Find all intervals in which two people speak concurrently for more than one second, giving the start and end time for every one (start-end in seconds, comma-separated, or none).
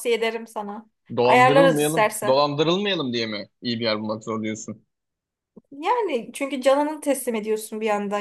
1.2-2.5